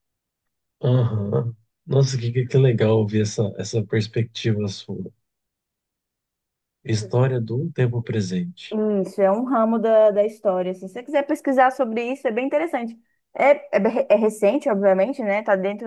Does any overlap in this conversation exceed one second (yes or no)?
no